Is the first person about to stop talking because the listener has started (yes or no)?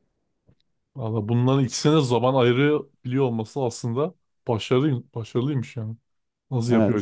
yes